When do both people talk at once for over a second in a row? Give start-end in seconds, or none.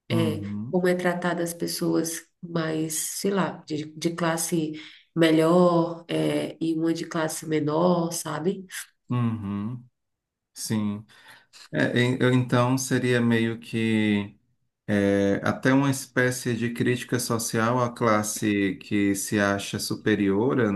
none